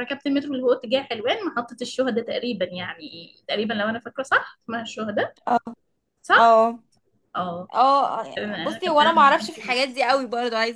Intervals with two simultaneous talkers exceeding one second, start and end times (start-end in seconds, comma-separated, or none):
8.4-10.0